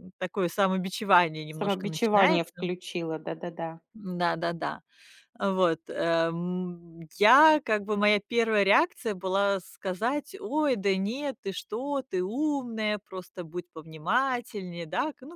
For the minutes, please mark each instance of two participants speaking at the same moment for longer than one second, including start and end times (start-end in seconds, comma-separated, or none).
1.5-2.7